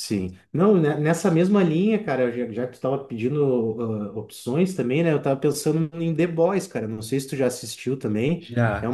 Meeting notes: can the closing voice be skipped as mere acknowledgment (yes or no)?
yes